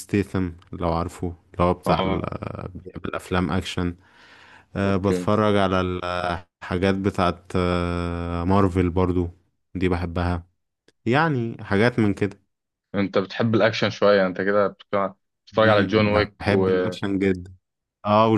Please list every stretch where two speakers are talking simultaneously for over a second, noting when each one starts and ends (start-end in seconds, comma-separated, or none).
15.5-16.9